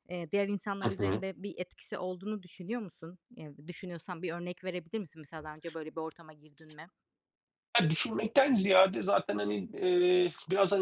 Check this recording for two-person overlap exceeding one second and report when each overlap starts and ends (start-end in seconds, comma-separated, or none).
none